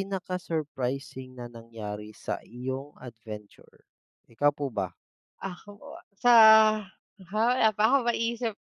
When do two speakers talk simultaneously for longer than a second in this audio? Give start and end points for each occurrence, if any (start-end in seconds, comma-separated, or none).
none